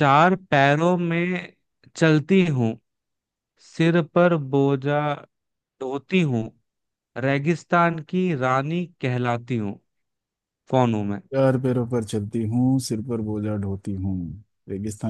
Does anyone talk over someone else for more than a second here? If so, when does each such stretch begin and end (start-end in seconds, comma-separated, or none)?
none